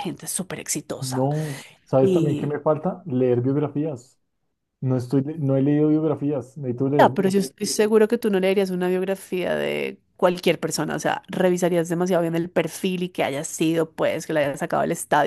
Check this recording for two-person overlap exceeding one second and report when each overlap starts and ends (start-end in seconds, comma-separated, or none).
none